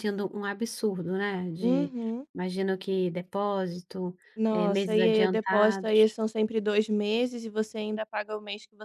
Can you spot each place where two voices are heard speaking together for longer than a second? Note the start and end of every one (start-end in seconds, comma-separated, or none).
4.5-6.2